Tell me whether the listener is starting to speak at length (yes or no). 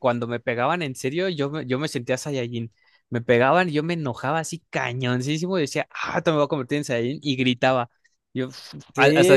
yes